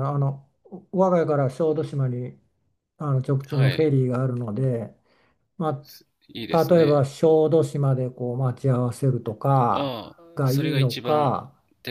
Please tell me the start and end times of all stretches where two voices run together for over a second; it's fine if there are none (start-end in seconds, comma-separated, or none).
9.7-11.4